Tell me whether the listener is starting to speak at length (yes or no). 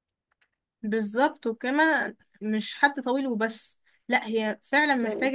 no